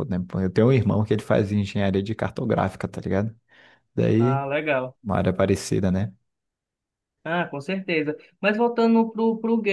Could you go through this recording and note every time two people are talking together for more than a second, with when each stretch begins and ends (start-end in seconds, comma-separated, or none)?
none